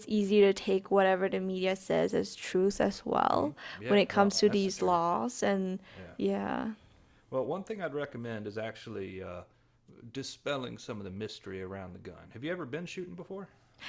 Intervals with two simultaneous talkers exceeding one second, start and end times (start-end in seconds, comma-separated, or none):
3.3-5.0